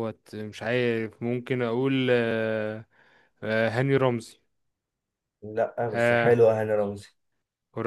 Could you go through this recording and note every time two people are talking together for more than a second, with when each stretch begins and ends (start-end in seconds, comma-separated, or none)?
none